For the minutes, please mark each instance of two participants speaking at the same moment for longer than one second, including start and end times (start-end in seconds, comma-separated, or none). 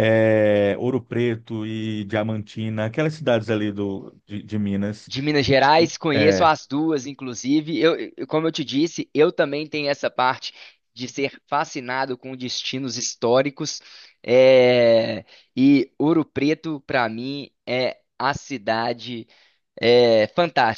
none